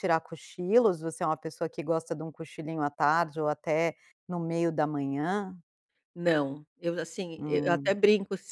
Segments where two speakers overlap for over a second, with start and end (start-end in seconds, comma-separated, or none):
none